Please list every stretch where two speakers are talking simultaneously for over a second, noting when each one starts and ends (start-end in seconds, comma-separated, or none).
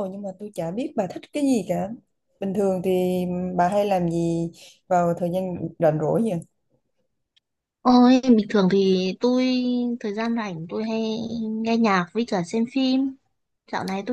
none